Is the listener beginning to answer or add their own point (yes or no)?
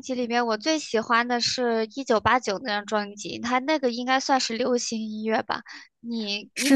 yes